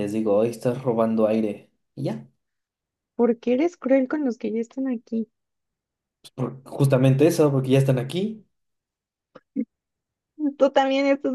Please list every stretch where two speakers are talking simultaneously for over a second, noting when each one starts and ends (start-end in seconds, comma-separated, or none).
none